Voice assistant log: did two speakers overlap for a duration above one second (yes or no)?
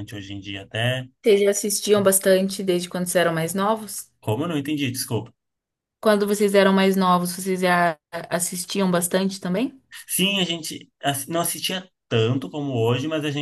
no